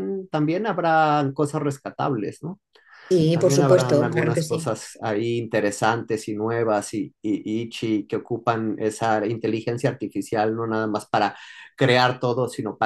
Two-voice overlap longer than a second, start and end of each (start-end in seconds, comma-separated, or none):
3.3-4.7